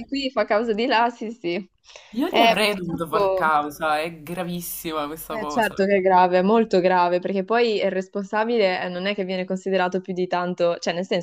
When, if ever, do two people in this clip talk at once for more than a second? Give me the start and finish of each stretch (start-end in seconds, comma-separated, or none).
2.3-3.5